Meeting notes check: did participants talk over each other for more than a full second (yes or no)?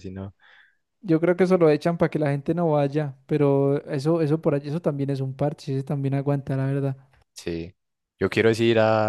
no